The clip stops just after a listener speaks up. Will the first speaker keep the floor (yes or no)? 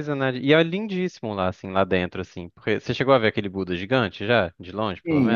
no